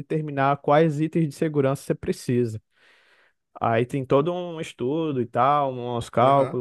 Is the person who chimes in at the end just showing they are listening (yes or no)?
no